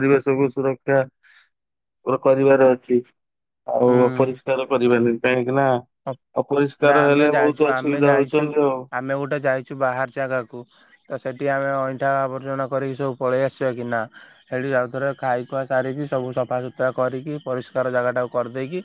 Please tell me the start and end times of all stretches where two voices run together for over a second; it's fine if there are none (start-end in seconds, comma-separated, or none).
6.8-8.4